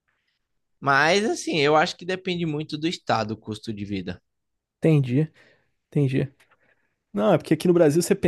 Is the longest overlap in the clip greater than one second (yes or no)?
no